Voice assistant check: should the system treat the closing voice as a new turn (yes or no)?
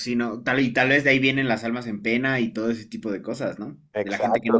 yes